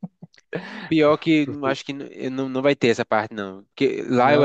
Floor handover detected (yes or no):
no